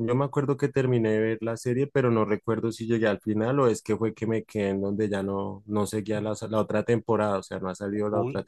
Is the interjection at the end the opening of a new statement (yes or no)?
yes